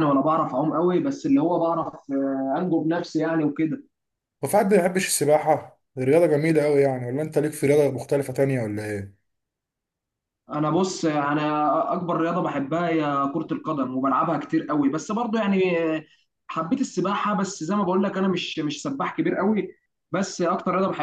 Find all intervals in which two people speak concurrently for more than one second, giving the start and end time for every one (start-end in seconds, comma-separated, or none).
none